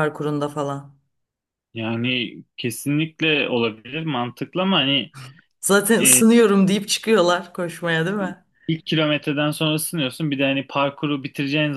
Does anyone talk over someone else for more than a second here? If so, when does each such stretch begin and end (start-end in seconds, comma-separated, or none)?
none